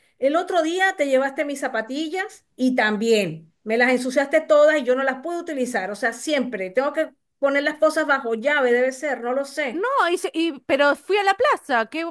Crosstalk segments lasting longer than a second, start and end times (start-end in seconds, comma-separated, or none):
none